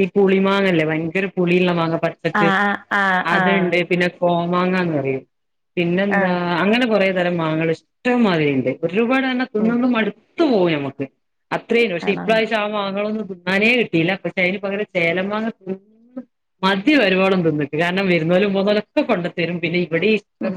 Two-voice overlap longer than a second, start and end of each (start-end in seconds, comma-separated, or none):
none